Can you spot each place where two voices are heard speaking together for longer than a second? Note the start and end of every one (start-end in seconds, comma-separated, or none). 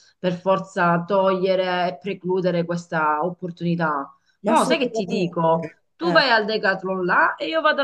4.4-6.2